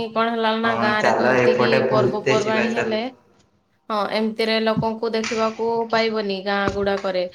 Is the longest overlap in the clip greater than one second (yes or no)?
yes